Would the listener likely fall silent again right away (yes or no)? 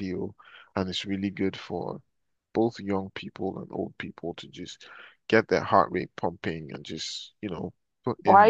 no